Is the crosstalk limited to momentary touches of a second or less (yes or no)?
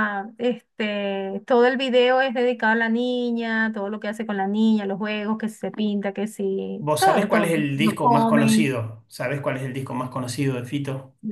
no